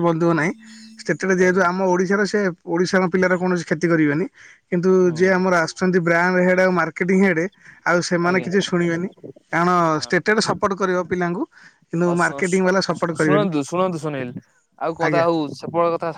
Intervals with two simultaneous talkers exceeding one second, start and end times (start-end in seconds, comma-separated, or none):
12.1-13.5